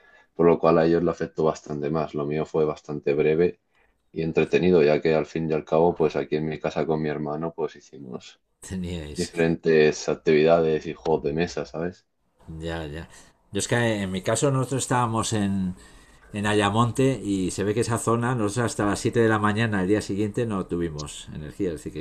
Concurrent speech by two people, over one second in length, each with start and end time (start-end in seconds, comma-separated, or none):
none